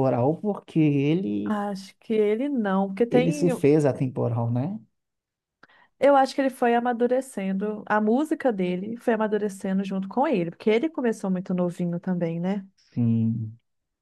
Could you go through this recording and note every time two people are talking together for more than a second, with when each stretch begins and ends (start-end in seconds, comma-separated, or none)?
none